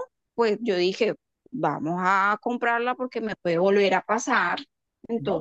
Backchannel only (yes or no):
no